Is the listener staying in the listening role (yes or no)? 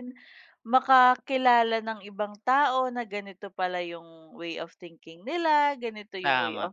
yes